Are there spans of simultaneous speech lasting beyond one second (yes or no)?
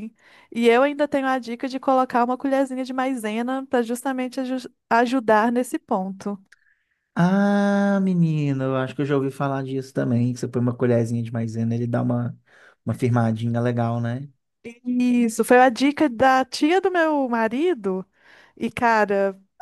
no